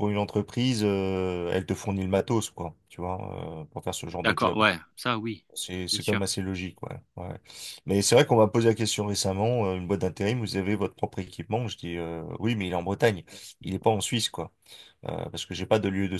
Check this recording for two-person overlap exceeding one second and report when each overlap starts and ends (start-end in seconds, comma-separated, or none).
none